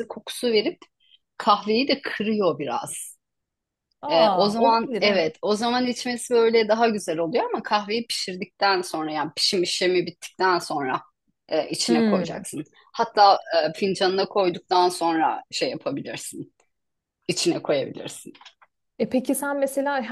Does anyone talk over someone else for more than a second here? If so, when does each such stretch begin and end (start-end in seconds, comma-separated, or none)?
4.1-5.3